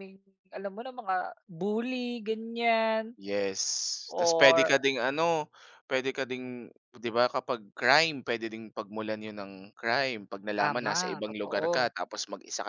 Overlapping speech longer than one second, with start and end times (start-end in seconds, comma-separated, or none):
10.6-11.9